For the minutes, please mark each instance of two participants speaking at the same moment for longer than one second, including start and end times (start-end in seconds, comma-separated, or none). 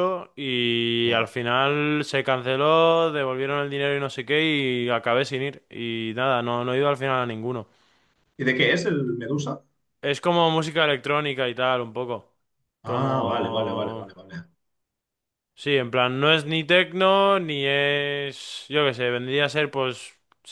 12.8-14.1